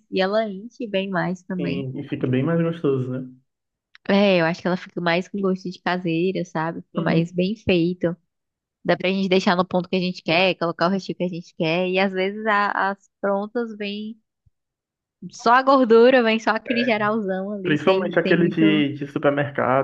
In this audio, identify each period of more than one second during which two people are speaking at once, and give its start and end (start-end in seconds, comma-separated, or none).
17.6-18.9